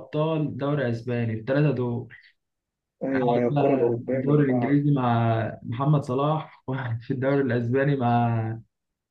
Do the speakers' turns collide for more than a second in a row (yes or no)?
yes